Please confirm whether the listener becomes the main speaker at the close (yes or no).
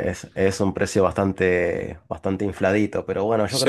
no